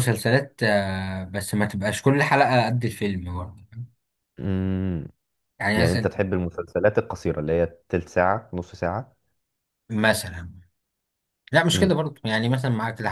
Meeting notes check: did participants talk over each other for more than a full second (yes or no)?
no